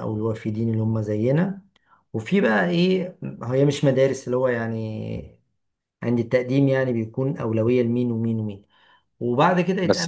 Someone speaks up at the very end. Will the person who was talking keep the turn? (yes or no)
no